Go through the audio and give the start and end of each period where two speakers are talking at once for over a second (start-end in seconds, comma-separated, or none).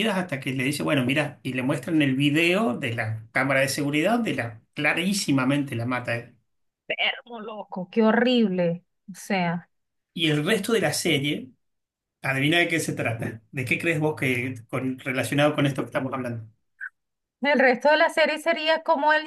none